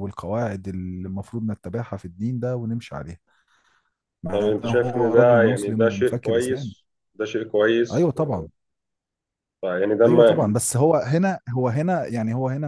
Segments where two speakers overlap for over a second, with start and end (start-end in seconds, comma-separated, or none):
4.3-6.7